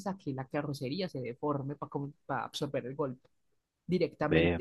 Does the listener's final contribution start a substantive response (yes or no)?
no